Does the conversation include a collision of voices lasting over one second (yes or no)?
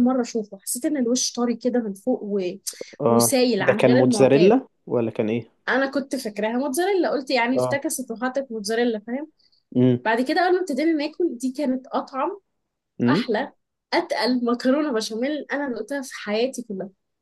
yes